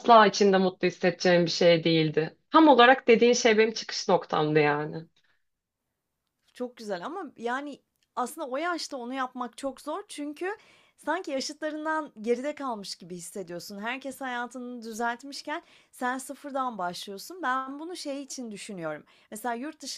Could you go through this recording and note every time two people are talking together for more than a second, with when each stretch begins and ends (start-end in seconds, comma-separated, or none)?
none